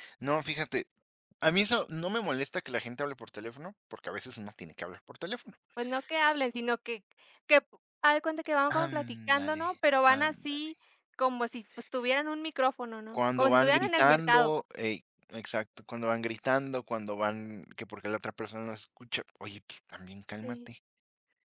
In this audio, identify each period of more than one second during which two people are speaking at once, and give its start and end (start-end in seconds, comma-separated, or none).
8.7-10.7, 13.1-14.5